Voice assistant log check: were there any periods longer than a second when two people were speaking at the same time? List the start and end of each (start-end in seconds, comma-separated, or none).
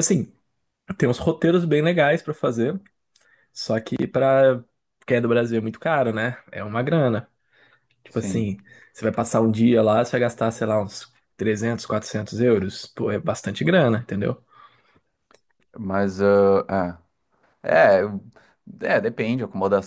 none